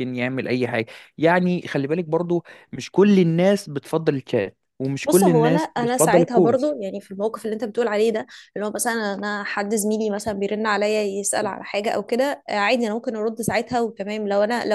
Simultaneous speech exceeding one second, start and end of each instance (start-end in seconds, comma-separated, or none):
5.0-6.7